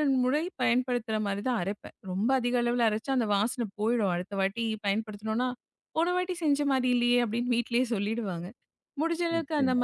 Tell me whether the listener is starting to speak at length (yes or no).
no